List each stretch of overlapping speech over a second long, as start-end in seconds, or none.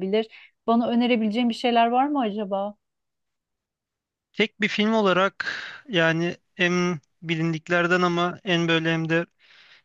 none